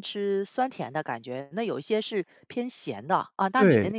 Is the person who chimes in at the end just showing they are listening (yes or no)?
no